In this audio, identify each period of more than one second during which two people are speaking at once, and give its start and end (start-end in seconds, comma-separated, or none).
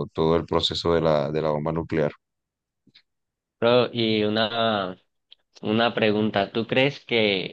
none